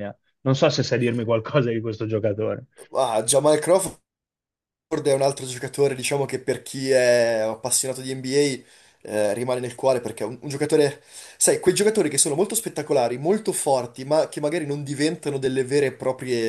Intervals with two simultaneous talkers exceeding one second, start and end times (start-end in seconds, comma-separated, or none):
none